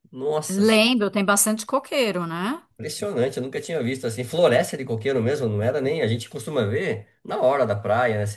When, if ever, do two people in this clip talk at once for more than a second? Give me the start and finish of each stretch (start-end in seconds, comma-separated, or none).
none